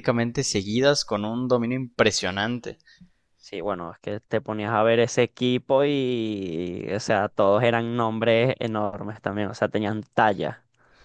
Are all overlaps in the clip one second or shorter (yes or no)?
yes